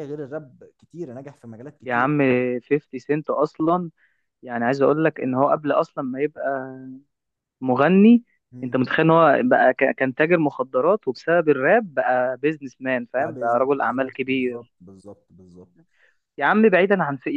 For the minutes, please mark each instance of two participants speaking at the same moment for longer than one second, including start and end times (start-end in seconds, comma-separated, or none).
13.1-14.7